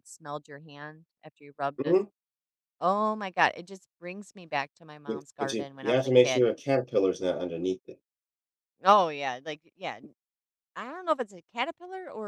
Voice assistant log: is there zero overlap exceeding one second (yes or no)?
no